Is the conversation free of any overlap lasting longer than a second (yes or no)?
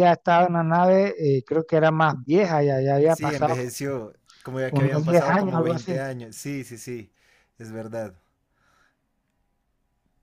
no